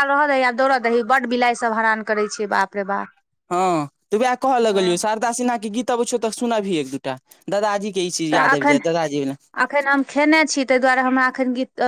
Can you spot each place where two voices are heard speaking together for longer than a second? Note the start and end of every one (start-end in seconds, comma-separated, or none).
none